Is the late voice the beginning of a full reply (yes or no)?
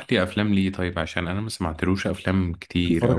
yes